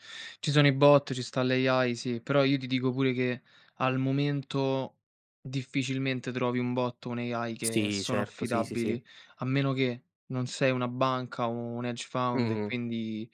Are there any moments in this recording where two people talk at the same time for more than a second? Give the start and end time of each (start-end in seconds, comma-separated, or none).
7.6-9.0